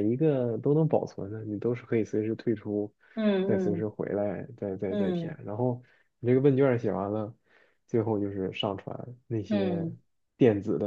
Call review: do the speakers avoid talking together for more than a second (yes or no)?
yes